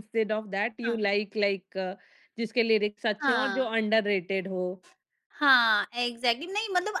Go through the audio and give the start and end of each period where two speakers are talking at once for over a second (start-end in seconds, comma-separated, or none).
none